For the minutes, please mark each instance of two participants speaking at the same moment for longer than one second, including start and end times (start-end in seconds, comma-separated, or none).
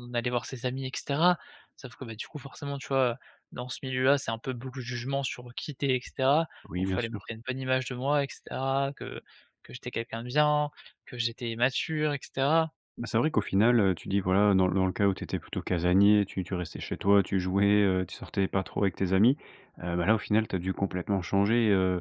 none